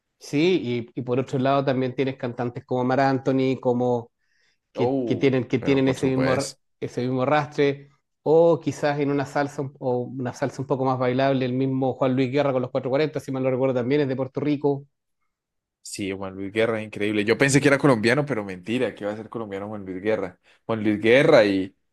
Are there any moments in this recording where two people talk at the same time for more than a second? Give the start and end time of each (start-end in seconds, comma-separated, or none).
4.7-6.6